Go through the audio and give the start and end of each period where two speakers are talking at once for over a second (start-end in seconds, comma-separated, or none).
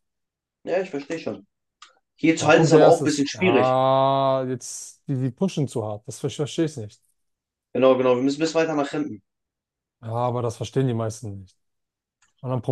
2.4-3.8